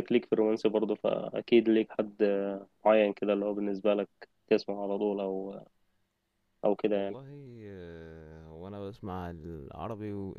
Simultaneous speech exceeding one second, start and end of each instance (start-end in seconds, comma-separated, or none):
none